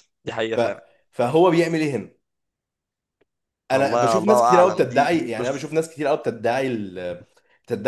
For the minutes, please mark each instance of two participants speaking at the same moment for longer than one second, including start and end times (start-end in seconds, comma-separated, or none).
3.7-5.7